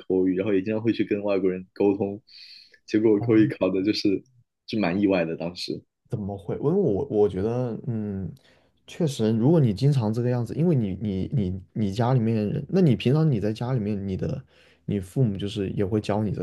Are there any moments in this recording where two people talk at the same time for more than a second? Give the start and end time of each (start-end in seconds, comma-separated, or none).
none